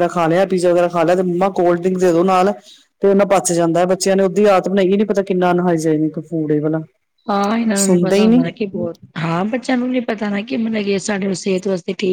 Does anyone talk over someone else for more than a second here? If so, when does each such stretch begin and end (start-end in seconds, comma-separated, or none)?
none